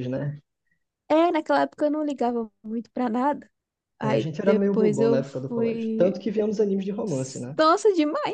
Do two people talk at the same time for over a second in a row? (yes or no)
yes